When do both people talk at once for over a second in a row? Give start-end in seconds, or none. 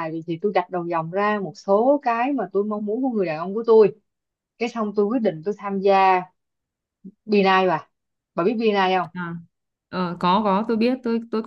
none